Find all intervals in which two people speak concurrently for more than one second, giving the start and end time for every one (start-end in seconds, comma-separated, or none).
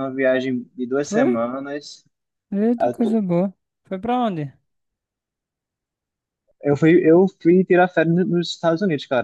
none